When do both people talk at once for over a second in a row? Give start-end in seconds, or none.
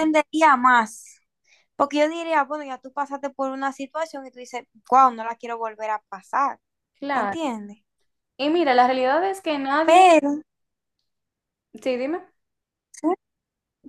none